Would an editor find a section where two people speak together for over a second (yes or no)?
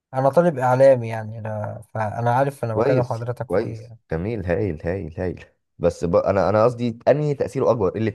yes